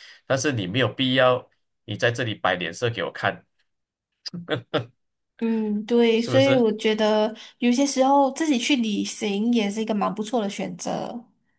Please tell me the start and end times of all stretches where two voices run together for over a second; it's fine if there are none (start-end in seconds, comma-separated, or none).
none